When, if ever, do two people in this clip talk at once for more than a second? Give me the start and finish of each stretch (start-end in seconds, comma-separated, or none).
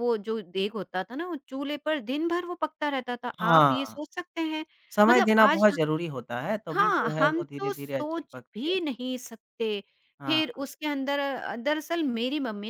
6.7-8.7